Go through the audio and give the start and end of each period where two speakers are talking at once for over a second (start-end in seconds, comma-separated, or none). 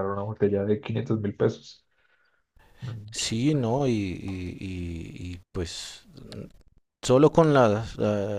none